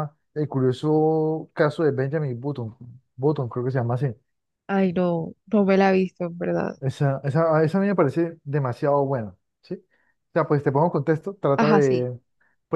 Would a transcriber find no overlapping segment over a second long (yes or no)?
yes